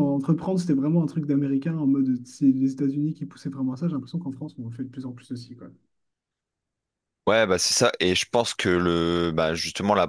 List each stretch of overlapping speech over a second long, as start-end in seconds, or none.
none